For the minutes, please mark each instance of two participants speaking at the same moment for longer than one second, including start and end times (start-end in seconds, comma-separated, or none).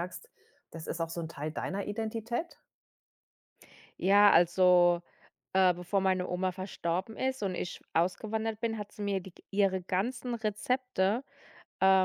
none